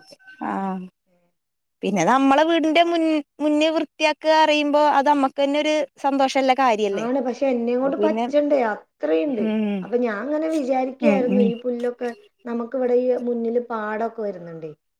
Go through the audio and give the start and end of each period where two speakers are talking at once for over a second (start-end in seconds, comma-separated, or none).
none